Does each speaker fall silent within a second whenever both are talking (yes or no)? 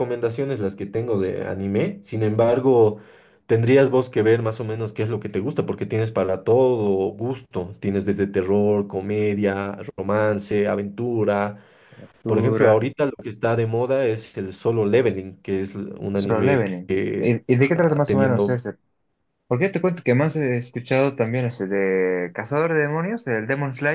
no